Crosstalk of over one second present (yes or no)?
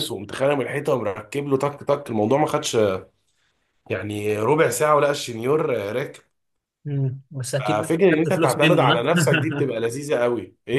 yes